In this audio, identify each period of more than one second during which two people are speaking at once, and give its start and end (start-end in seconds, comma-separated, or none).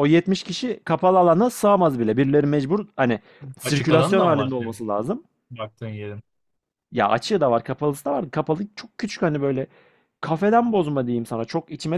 3.6-4.8